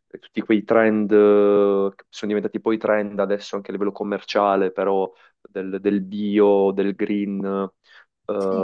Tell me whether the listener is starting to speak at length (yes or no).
no